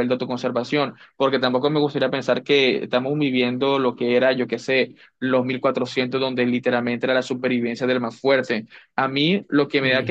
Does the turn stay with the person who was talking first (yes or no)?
yes